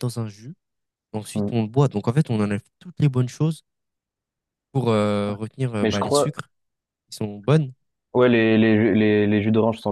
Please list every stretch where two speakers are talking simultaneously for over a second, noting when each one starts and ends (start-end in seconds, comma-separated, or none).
none